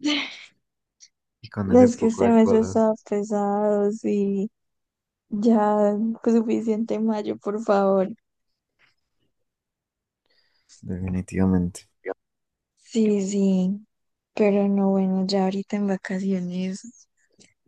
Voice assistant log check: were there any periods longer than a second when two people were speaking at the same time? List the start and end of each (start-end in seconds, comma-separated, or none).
1.6-2.9